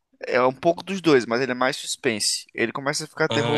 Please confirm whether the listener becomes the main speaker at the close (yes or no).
no